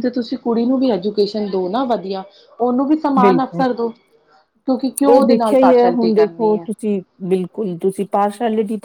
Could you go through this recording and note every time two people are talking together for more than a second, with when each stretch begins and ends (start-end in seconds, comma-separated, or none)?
5.1-6.7